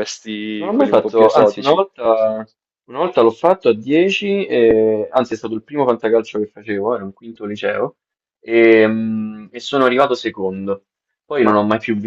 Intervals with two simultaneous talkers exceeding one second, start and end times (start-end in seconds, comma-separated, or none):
0.6-1.8